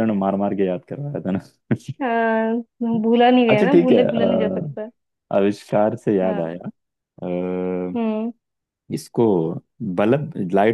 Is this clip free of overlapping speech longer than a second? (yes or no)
no